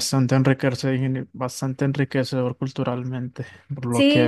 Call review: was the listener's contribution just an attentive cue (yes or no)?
no